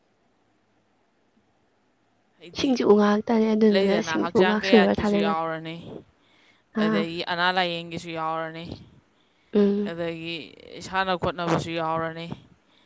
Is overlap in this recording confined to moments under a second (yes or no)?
no